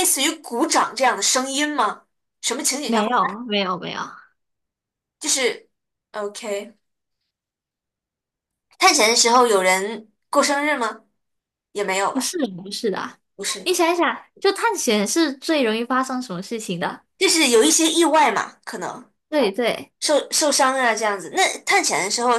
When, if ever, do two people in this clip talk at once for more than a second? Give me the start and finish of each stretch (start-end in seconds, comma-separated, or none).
none